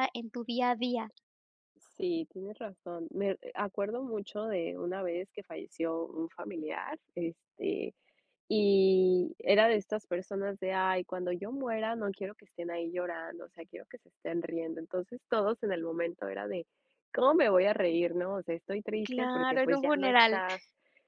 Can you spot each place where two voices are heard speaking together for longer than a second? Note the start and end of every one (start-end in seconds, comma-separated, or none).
19.0-20.4